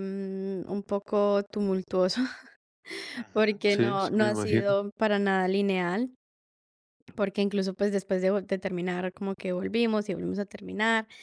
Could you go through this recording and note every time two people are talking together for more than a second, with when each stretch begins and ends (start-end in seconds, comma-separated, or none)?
3.3-4.7